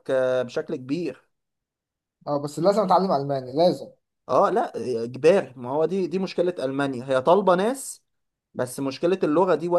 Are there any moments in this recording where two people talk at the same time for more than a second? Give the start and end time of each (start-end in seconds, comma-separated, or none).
none